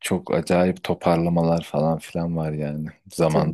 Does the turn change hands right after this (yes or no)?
yes